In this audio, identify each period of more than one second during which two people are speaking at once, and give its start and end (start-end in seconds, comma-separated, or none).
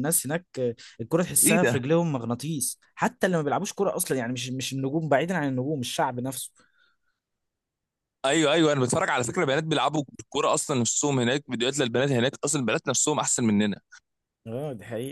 none